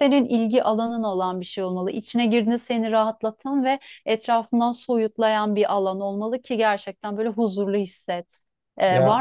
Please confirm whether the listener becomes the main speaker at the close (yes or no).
no